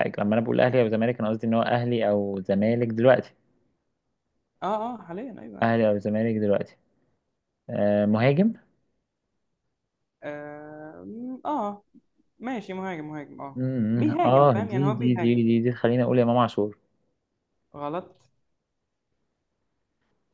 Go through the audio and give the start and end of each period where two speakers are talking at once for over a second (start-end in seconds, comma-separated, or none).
13.5-15.4